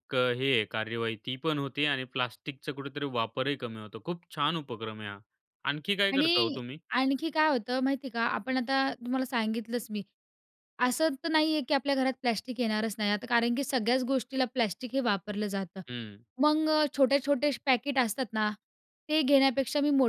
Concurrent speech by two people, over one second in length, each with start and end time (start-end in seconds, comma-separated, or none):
none